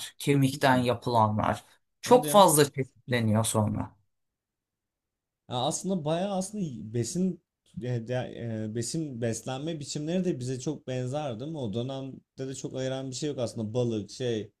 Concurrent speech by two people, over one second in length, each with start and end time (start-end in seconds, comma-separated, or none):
none